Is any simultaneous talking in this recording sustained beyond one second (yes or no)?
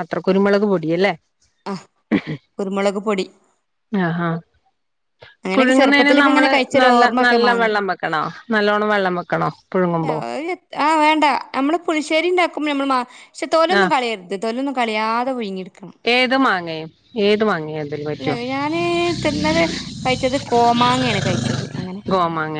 yes